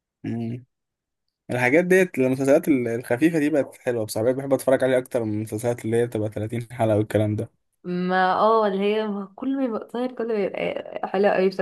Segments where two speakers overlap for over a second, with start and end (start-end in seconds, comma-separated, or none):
none